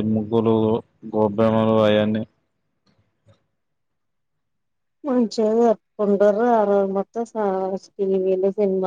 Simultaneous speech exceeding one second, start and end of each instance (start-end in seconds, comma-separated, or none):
none